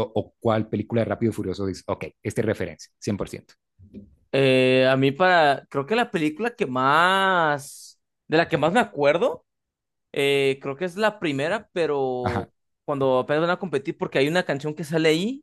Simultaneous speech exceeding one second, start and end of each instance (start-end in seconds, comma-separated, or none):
none